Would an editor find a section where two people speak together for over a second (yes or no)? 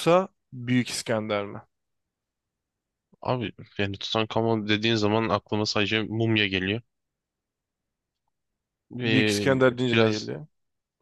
yes